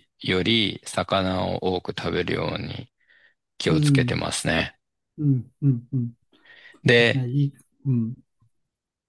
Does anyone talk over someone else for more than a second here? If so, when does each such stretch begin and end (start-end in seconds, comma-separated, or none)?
none